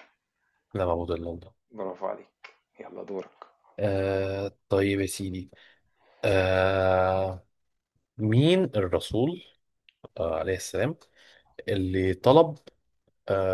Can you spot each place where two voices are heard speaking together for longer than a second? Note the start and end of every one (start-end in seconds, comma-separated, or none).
none